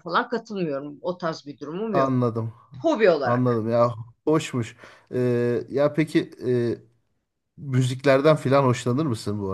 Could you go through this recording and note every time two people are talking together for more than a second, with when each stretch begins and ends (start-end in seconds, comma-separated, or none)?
none